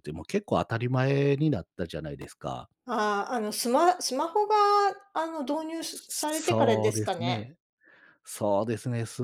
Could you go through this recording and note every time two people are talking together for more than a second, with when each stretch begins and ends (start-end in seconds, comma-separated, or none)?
6.1-7.5